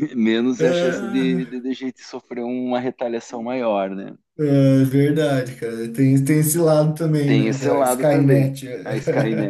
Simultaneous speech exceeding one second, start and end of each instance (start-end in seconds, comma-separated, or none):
7.3-8.7